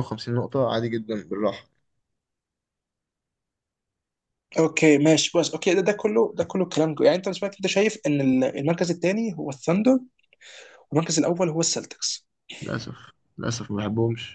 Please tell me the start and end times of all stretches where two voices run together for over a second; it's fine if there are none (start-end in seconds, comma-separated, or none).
none